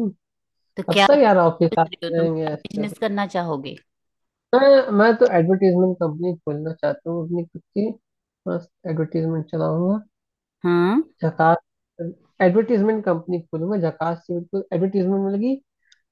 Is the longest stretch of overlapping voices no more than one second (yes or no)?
no